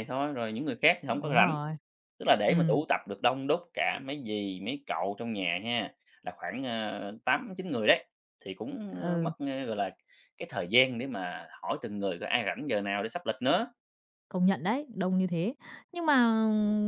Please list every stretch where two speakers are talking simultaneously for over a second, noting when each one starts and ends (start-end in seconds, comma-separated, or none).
none